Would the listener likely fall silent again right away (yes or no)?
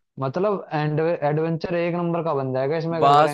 no